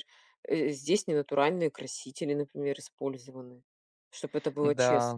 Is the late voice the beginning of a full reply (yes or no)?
yes